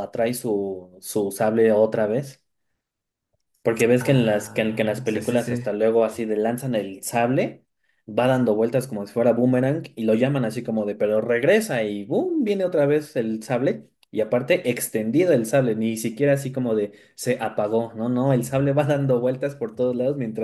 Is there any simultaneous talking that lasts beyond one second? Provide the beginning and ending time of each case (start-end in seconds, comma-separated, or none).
4.0-5.6